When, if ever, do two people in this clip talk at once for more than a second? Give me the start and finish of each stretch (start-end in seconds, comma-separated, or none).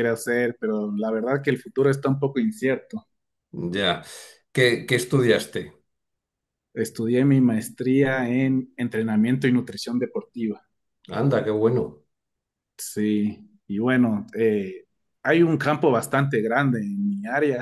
none